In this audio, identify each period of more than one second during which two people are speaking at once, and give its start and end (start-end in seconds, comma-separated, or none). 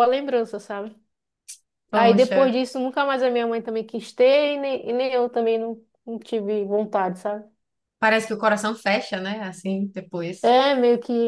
none